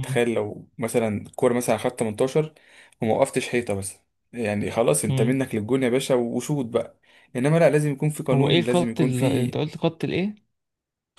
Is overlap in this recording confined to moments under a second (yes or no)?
no